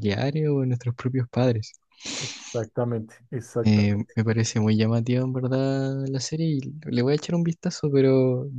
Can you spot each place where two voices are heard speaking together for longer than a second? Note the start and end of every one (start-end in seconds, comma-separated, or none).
none